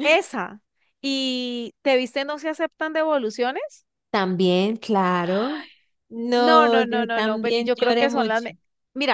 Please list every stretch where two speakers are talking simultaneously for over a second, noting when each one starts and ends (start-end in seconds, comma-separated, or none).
6.4-8.5